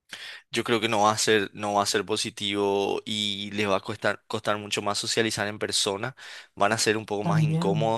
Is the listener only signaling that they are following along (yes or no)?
yes